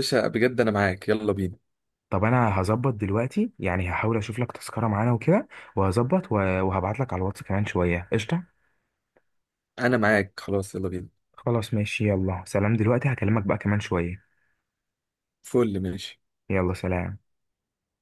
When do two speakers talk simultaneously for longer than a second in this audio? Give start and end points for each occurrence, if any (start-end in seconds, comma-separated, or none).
none